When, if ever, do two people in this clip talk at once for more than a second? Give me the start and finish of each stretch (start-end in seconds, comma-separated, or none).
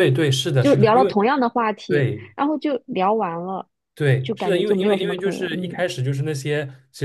4.2-5.9